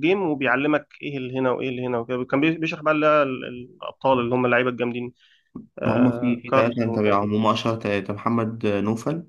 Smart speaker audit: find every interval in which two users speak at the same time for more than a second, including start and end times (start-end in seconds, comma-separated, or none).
5.8-7.3